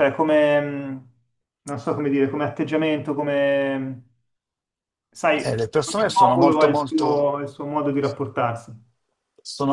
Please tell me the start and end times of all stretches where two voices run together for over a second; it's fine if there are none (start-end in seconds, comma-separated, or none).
5.4-7.3